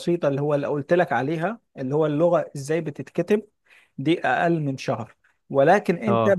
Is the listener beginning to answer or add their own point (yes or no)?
no